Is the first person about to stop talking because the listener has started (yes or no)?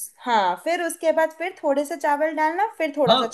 yes